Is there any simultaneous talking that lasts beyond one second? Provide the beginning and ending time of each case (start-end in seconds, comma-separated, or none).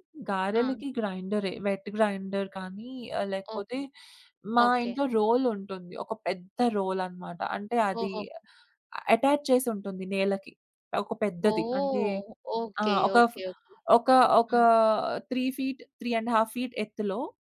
none